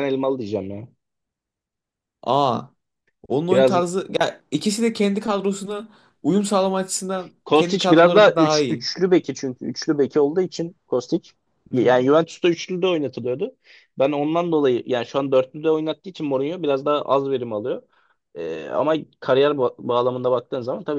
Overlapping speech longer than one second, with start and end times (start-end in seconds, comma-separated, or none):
7.5-8.8